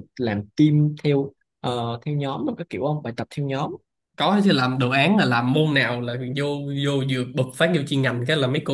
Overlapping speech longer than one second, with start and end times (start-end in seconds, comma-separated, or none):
none